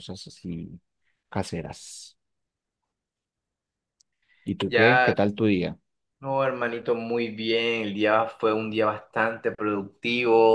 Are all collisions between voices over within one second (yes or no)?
yes